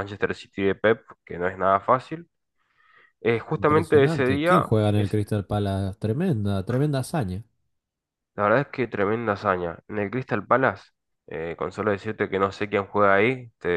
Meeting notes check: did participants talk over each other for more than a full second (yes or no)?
yes